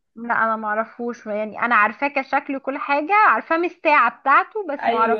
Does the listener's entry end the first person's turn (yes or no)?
no